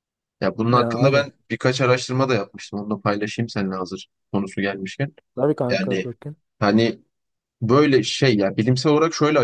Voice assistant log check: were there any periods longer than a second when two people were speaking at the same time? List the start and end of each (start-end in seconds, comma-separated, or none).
none